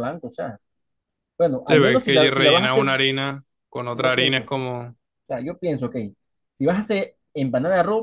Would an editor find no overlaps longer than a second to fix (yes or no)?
no